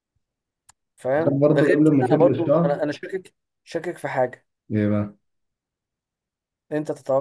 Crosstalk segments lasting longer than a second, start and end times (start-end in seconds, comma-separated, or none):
1.2-2.8